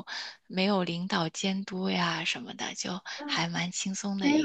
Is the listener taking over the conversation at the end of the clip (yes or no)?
yes